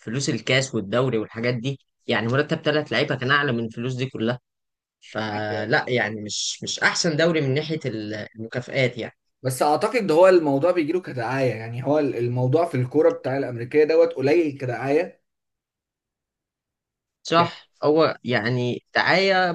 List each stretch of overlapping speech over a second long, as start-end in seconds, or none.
none